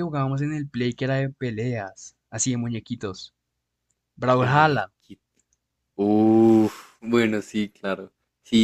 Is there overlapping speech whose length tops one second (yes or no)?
no